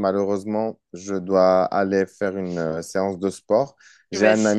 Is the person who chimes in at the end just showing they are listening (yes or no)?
yes